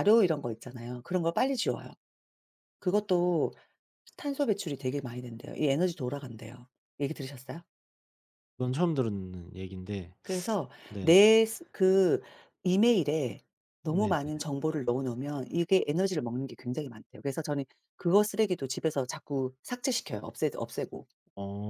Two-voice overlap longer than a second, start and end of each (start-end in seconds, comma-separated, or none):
none